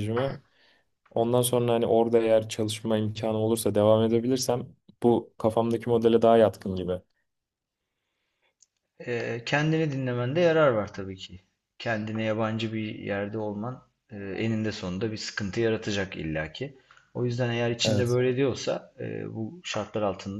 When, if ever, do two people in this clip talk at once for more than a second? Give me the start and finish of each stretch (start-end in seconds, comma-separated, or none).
none